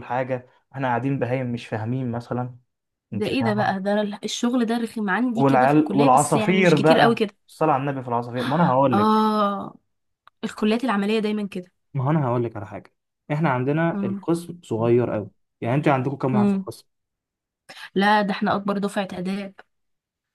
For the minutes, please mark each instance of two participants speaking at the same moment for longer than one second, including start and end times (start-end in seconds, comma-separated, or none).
5.3-7.3